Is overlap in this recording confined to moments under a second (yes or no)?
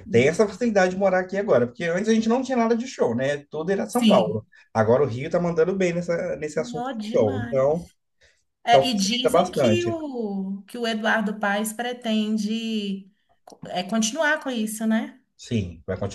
no